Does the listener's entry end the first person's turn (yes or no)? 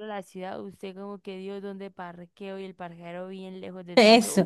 yes